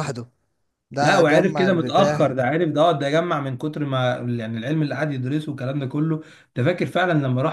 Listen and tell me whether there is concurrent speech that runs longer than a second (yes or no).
yes